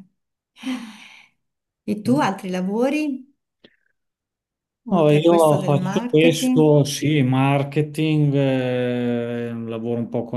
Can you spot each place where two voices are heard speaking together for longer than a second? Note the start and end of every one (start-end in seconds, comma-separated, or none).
4.9-6.7